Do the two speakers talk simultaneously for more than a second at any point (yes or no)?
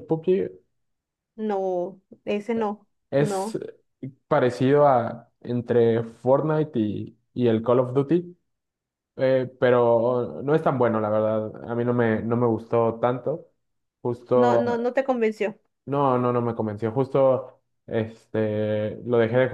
no